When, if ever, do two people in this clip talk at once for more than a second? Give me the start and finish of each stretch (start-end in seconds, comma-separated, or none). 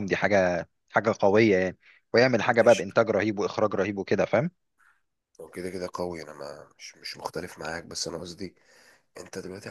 none